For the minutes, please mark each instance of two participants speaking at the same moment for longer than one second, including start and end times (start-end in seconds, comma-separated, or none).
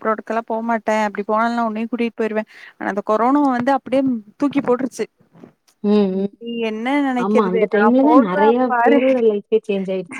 7.2-9.0